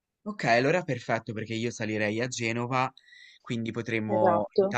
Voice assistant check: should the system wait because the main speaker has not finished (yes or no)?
yes